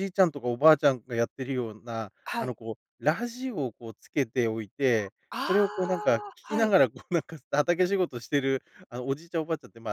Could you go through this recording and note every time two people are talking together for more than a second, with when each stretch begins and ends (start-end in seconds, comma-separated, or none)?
5.3-6.7